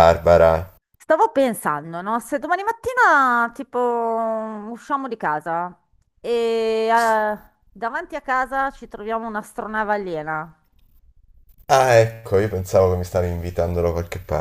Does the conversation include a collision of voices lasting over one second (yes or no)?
no